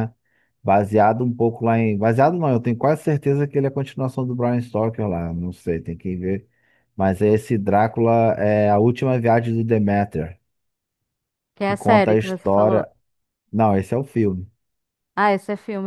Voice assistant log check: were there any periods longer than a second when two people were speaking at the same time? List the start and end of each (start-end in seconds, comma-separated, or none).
11.6-12.9